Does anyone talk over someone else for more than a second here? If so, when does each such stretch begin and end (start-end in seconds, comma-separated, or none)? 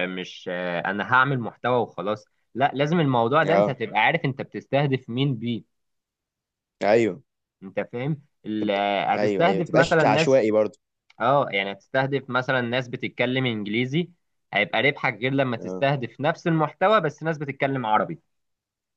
8.6-10.4